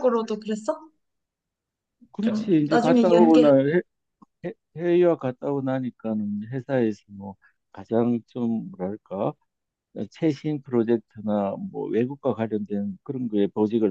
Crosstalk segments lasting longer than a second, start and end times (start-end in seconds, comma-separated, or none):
2.2-3.5